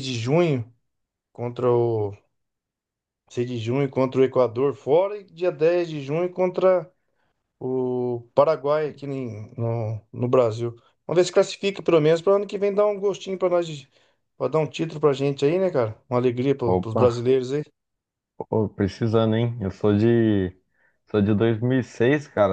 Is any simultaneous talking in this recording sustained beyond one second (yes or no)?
no